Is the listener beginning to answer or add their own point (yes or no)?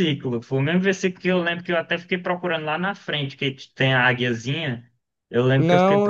yes